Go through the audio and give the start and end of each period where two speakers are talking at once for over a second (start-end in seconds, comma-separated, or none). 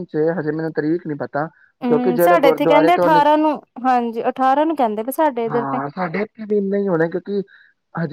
1.9-3.2